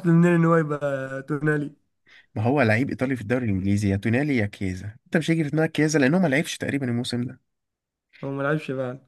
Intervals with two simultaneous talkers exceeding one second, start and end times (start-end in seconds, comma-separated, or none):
none